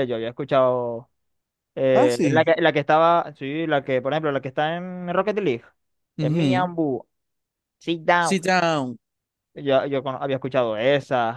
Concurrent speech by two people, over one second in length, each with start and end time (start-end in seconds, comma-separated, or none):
none